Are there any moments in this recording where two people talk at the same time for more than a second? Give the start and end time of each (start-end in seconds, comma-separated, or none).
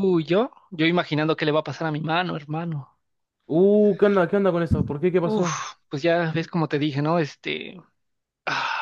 none